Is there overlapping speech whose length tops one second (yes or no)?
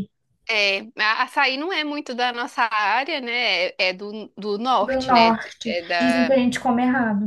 yes